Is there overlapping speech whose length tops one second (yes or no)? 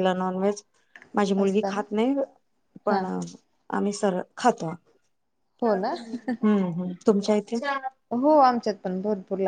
no